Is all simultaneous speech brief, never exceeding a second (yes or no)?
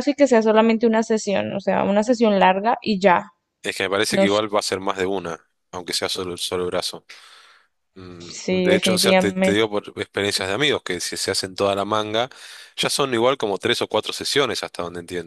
no